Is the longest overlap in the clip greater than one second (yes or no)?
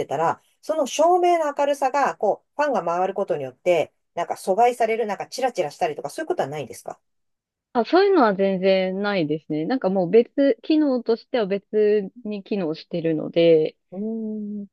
no